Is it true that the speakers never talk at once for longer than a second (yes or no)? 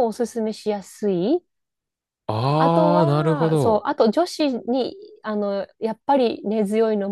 no